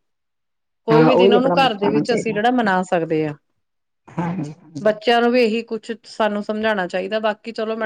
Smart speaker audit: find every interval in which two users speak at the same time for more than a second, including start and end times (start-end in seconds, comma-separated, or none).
0.9-2.4